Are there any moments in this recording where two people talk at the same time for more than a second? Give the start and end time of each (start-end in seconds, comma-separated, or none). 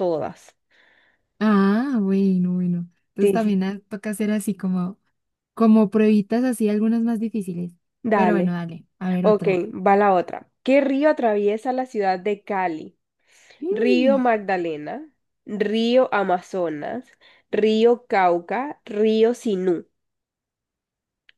none